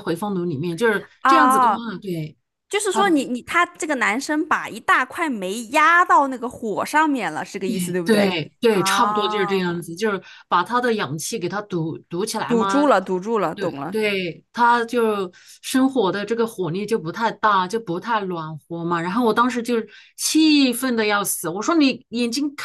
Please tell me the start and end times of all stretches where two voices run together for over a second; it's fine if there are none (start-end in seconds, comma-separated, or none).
7.7-9.8